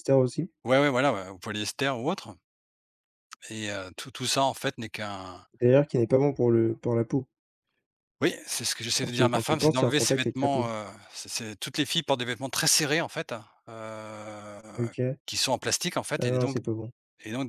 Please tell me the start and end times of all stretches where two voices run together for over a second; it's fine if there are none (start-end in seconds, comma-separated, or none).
9.0-10.7